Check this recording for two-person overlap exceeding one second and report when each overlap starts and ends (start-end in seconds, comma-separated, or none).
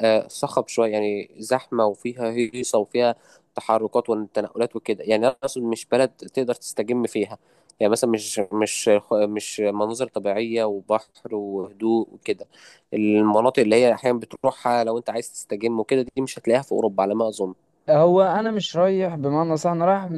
none